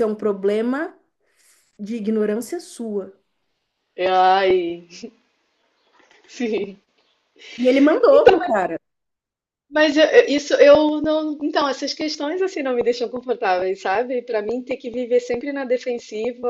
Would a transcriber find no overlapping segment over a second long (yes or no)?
yes